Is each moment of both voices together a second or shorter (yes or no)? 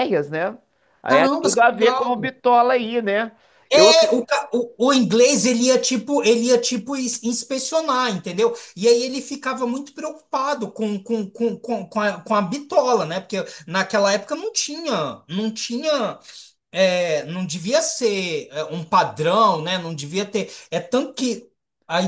no